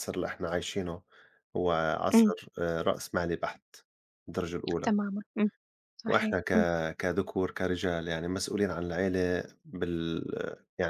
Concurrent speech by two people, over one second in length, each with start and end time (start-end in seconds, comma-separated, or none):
none